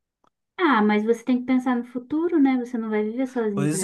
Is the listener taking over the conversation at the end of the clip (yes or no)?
yes